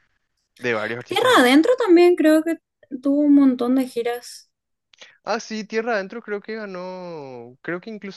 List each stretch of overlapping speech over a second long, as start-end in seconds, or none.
none